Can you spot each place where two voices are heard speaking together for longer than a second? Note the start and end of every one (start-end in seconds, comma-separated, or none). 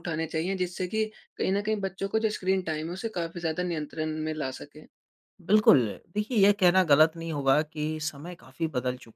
none